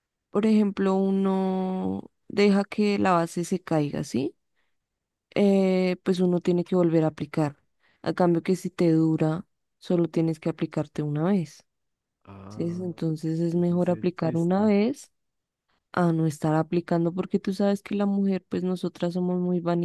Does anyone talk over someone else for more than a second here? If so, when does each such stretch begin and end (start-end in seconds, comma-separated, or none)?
13.5-14.7